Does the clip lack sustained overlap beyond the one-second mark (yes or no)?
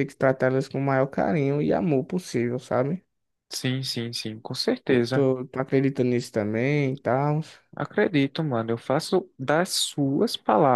yes